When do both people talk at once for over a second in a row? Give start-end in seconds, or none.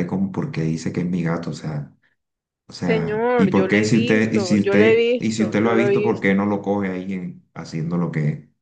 2.8-6.3